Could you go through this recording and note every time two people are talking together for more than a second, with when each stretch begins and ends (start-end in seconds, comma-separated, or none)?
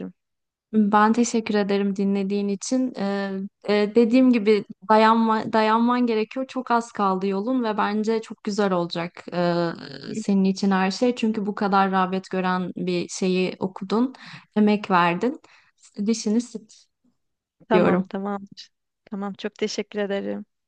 none